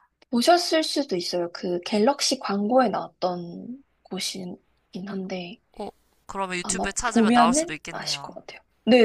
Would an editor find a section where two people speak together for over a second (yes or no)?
yes